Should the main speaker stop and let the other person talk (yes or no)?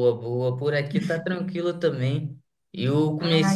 no